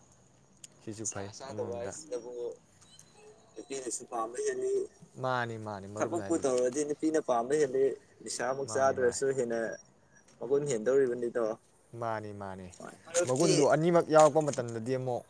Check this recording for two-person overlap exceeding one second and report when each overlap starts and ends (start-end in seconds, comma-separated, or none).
none